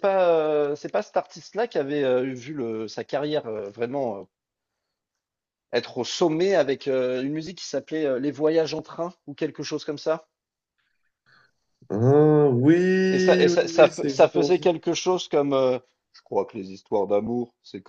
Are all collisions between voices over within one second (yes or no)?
no